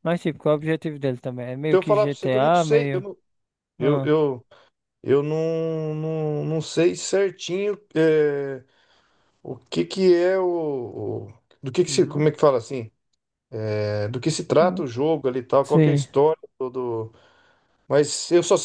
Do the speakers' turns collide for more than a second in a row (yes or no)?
yes